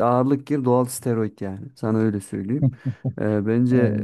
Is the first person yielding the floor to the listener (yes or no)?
no